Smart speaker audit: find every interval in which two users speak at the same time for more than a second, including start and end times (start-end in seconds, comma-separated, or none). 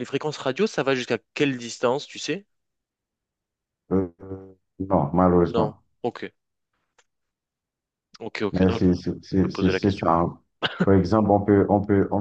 8.5-10.1